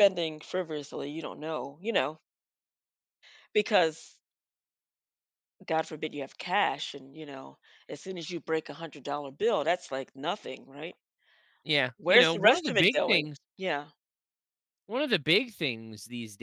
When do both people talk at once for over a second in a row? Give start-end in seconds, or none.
12.0-13.4